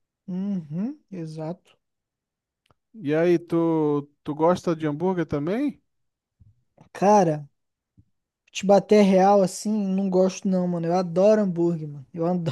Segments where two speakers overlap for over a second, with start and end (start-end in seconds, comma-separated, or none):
none